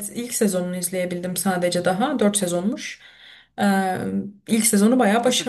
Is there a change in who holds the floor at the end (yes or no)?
yes